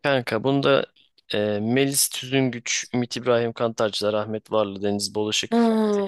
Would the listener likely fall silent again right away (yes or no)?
no